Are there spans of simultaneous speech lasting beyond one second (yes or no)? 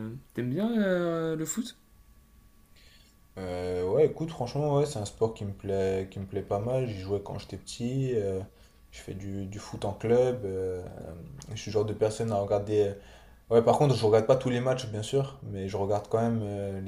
no